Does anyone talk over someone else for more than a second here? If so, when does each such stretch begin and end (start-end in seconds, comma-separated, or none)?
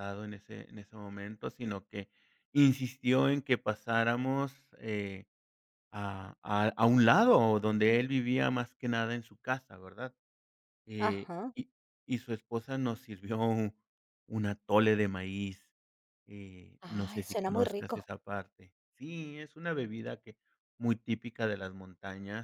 16.8-18.1